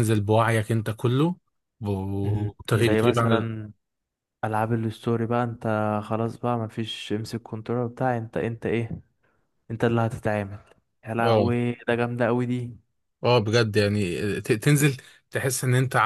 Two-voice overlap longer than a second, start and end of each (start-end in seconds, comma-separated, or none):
2.2-3.5